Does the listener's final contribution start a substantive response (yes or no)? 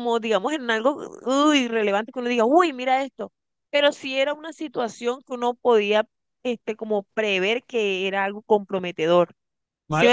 yes